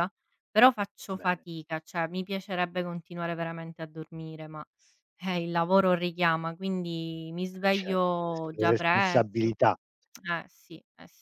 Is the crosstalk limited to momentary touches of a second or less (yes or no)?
no